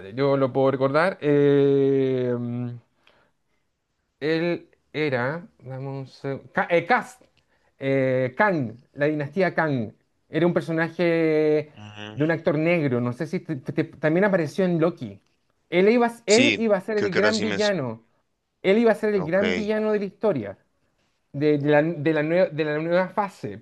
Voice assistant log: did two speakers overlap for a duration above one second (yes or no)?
yes